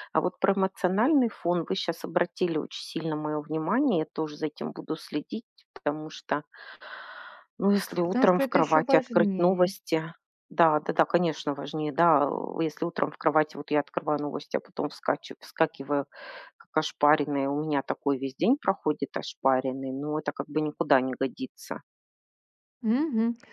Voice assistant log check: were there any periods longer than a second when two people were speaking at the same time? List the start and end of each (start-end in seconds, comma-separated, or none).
8.0-9.7